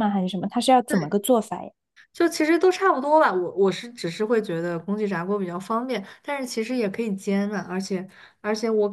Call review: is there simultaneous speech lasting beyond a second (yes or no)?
no